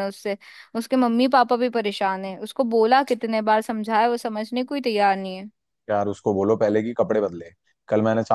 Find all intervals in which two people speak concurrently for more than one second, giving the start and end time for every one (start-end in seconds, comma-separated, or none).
none